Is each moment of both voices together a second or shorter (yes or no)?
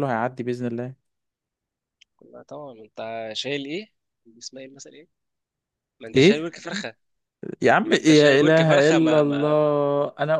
no